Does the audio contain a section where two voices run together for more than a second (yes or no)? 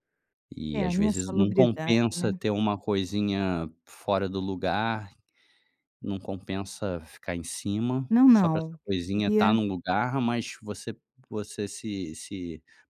yes